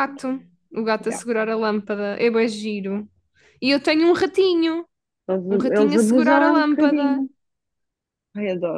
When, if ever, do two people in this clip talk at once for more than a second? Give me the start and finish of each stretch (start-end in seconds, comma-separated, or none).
5.5-7.2